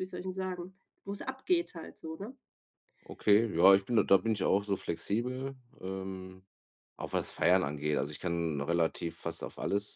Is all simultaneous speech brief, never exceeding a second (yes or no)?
yes